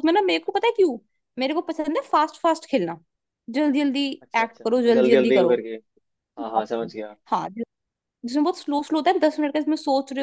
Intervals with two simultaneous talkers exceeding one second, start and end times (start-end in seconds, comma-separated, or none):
4.2-5.6